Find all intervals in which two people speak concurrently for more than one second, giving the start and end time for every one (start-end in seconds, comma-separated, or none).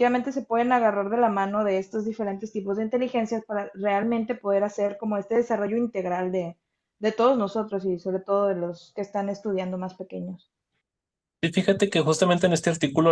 none